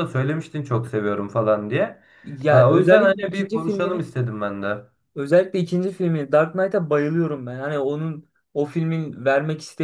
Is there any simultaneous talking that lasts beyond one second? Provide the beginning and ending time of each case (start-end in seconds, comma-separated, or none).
2.5-4.0